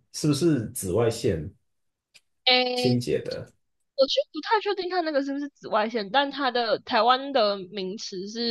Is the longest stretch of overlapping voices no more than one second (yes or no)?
yes